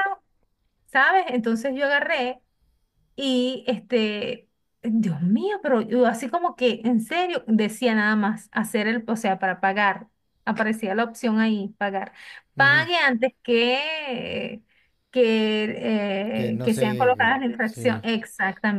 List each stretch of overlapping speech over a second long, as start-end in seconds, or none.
16.5-18.0